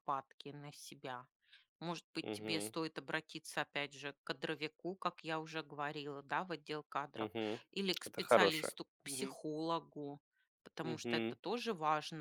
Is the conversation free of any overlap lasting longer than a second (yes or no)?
no